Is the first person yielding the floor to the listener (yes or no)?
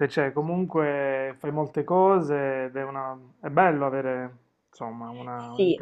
yes